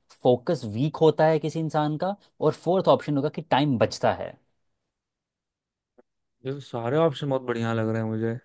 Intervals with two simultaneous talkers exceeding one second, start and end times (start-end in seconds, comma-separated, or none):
none